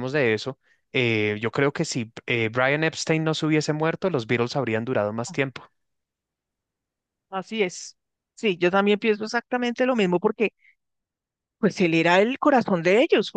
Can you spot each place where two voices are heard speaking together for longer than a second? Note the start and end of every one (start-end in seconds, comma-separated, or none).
none